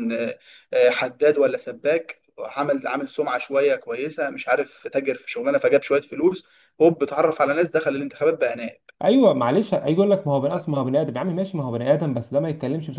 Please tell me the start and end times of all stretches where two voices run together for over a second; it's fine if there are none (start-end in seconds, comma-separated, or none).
none